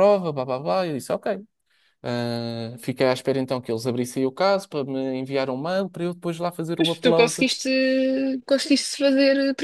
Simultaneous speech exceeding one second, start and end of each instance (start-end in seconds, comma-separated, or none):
none